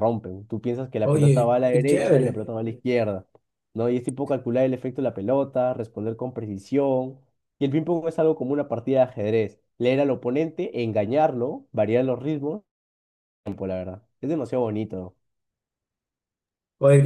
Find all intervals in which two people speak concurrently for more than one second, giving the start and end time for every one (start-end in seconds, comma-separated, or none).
1.0-2.4